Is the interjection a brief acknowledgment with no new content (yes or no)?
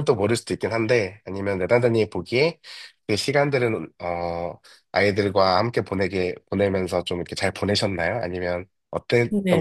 no